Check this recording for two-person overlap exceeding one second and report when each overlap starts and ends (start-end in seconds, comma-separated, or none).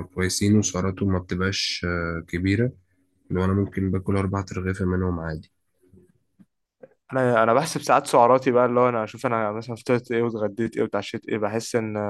none